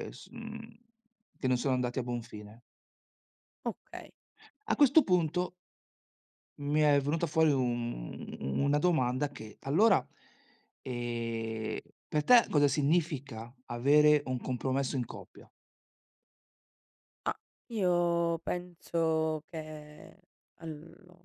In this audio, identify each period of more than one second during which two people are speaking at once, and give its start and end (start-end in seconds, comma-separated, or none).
none